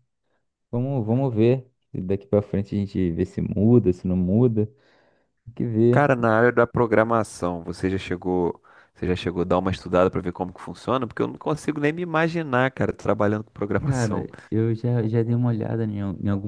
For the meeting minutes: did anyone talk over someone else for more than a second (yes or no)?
no